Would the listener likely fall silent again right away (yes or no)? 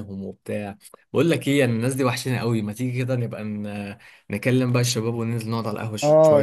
no